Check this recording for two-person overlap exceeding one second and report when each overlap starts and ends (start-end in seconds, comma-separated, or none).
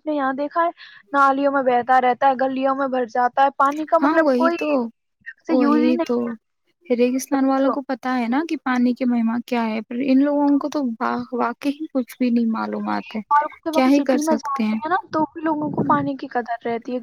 none